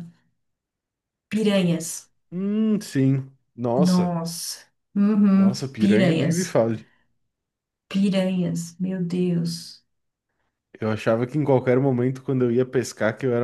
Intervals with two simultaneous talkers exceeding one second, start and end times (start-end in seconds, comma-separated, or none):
5.3-6.6